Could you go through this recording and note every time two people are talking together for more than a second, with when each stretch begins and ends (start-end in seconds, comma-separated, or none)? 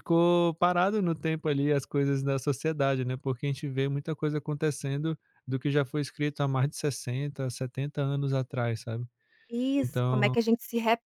none